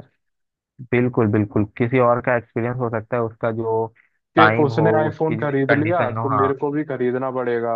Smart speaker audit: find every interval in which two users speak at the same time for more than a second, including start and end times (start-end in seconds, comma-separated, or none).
4.4-6.5